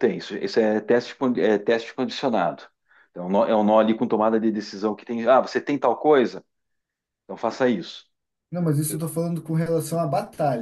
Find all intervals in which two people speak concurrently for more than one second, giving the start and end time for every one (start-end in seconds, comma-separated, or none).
none